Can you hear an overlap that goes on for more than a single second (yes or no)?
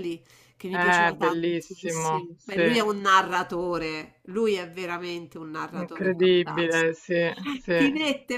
yes